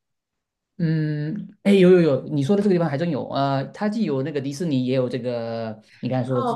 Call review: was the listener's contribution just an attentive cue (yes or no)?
no